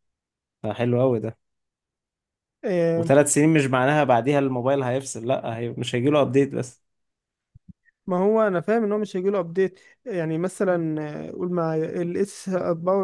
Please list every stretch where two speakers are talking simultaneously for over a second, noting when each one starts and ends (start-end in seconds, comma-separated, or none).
none